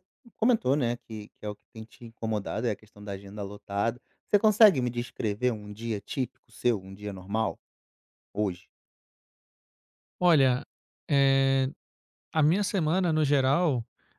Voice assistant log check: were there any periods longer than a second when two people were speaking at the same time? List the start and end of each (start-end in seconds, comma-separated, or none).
none